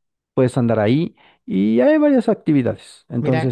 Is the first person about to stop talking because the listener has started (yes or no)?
no